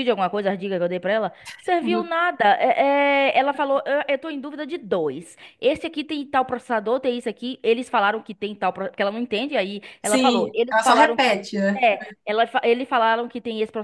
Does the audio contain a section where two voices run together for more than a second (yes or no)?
yes